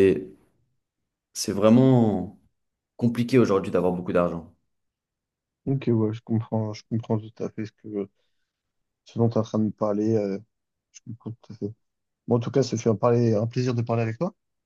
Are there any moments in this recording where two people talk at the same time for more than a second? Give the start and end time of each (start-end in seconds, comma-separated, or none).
none